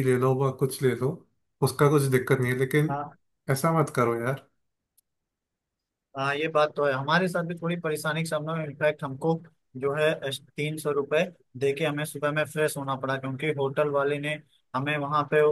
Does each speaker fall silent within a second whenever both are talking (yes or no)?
yes